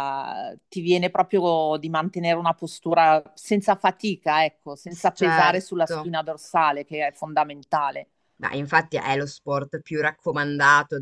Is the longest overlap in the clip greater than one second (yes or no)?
yes